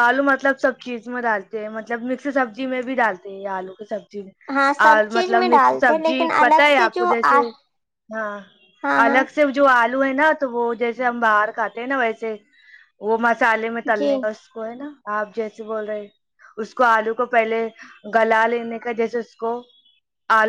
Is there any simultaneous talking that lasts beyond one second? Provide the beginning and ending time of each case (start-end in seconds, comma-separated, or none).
4.9-7.4